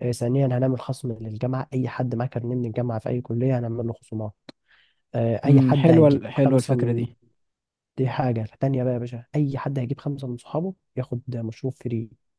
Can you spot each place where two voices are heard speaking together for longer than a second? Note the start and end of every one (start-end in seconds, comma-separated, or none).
5.5-7.0